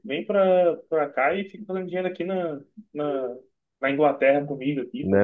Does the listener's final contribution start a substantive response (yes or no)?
yes